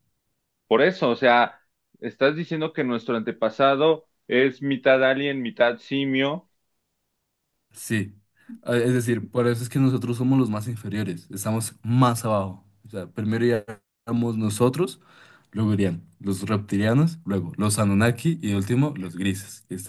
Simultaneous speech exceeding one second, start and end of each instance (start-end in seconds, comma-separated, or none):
none